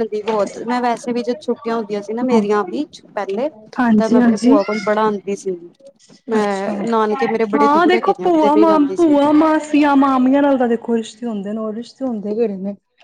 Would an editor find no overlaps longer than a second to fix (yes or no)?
no